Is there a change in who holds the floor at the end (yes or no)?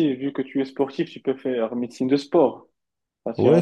yes